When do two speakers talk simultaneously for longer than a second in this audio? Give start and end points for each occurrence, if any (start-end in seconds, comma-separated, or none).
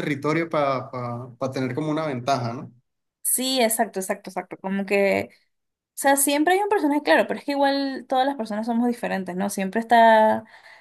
none